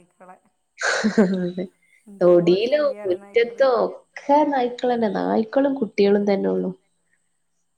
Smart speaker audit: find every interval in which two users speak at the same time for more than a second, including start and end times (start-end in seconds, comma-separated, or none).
2.2-3.6